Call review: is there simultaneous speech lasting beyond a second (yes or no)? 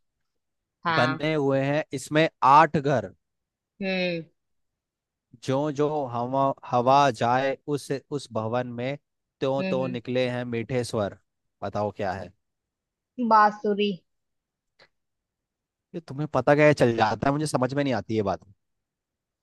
no